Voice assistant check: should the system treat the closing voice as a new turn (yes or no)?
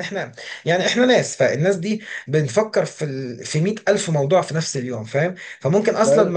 no